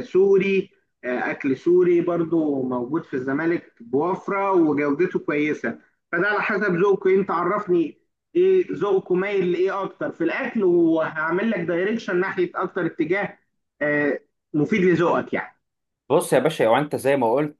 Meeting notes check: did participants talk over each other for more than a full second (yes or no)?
no